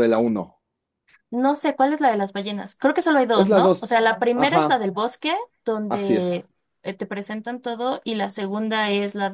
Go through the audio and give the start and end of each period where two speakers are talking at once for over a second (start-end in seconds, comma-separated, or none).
3.3-4.8